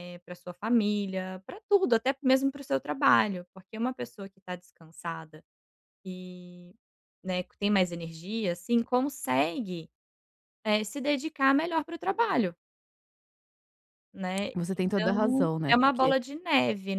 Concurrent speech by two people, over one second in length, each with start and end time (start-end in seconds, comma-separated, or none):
14.5-16.1